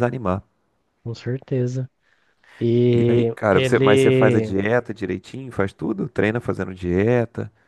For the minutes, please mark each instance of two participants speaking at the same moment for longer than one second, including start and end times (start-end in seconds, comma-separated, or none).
2.9-4.6